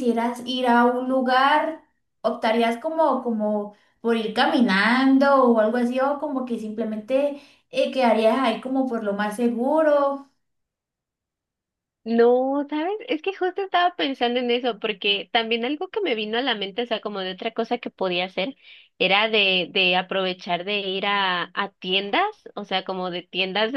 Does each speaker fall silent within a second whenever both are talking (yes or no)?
yes